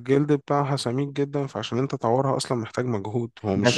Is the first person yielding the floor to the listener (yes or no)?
yes